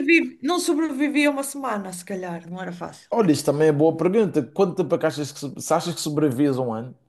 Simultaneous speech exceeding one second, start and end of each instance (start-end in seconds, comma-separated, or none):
none